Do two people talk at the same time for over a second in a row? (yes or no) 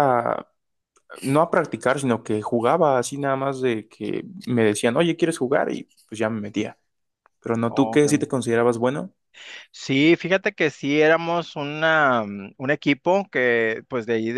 no